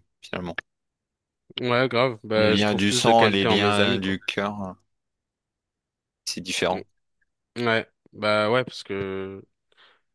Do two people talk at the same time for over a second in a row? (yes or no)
yes